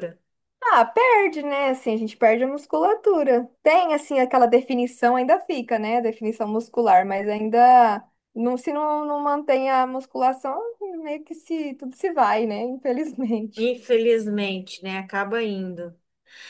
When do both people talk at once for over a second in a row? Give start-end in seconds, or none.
none